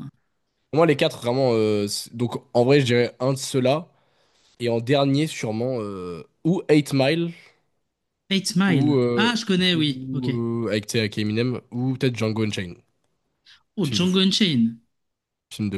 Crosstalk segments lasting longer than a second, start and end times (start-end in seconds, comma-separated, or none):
8.7-10.3